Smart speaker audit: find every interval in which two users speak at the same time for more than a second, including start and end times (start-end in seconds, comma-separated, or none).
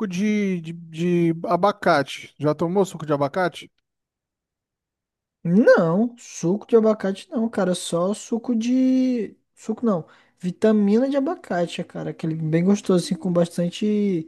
none